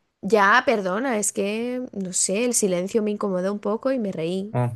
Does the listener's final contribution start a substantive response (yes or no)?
no